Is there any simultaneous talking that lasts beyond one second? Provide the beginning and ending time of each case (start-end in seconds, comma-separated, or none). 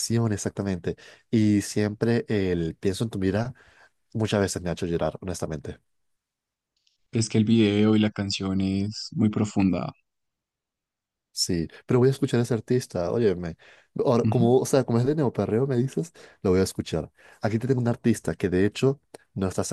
none